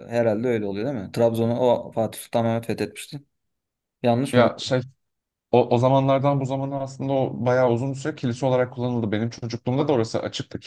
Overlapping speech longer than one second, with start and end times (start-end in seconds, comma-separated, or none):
none